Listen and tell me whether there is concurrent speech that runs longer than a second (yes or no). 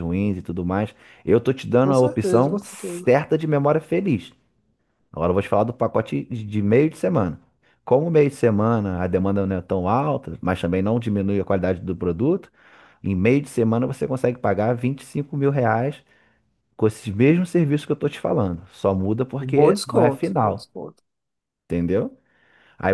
yes